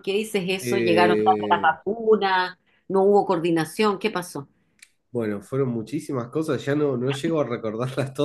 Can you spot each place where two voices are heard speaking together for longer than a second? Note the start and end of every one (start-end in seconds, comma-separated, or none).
0.6-1.8